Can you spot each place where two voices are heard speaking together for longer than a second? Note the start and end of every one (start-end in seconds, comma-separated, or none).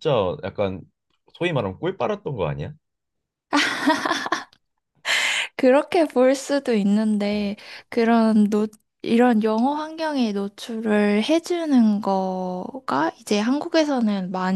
none